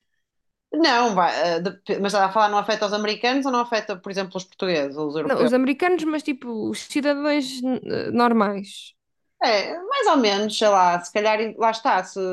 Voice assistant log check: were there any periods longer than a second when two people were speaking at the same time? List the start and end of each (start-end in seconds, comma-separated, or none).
none